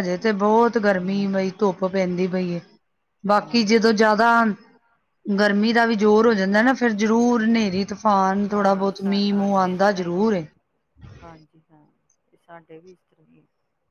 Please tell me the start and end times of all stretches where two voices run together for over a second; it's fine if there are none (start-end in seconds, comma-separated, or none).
8.5-10.4